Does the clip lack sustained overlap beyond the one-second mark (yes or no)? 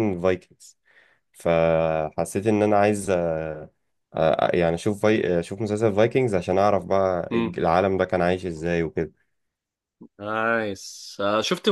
yes